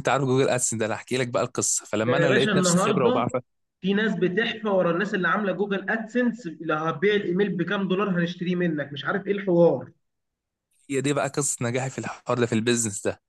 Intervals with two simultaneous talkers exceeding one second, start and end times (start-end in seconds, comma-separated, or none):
2.0-3.3